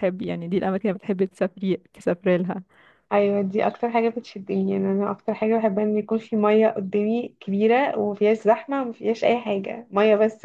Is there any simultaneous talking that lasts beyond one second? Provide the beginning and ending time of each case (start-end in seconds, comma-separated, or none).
none